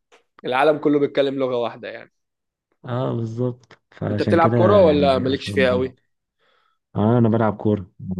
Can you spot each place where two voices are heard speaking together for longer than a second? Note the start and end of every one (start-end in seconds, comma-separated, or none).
4.1-5.5